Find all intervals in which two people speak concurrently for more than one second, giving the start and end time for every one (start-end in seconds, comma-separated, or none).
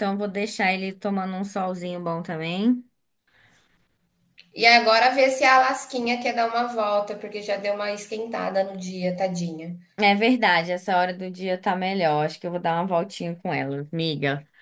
none